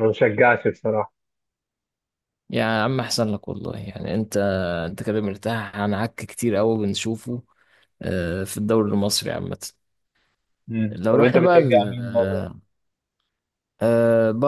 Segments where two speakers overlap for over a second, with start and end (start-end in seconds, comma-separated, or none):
10.9-12.5